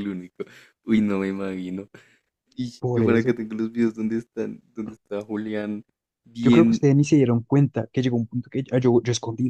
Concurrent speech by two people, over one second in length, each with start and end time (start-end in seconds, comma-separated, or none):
none